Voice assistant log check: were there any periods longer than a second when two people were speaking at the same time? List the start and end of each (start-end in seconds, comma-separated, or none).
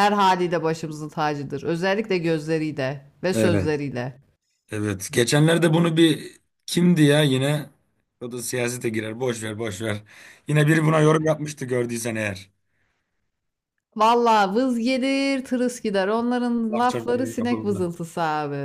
16.7-17.9